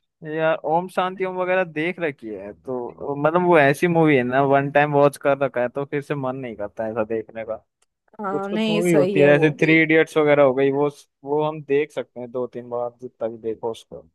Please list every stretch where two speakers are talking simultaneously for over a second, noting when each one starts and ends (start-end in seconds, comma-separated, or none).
8.3-9.7